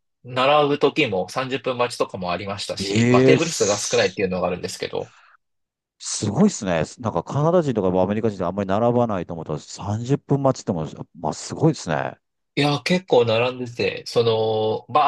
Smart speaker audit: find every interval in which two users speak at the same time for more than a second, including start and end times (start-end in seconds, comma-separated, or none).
2.8-4.2